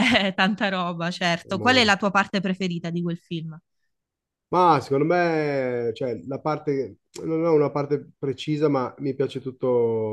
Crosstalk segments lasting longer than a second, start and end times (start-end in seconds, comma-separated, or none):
none